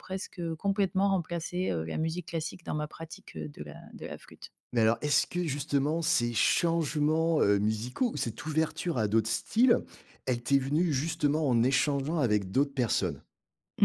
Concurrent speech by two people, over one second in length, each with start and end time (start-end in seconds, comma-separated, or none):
none